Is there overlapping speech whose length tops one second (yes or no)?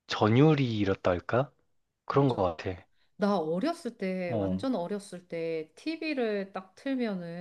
no